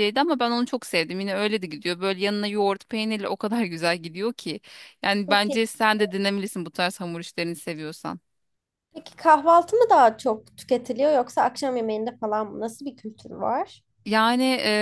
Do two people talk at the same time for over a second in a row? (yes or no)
no